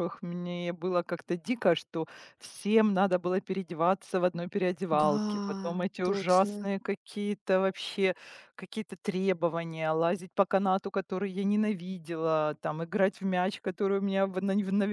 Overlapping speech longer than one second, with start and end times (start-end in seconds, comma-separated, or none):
4.9-6.6